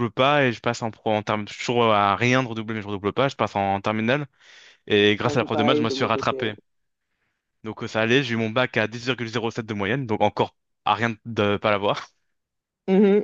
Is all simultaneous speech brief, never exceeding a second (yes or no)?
no